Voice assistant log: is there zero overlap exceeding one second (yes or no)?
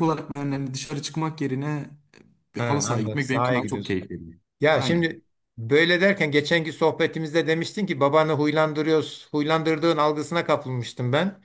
no